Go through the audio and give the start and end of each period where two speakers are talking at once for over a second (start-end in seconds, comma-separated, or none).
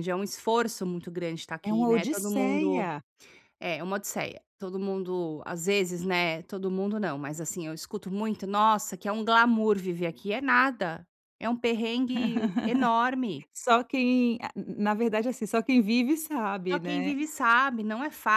1.6-2.9